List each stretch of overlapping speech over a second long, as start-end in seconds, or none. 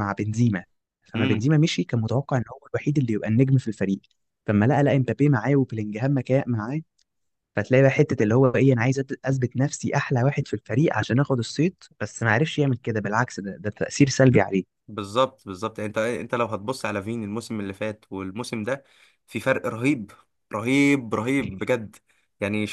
none